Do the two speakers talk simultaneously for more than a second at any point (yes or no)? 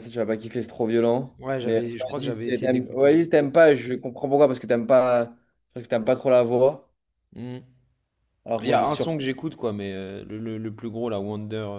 yes